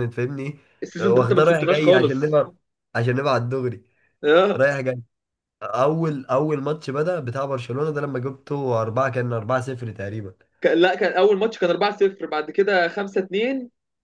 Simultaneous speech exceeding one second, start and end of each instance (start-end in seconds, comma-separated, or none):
1.0-2.4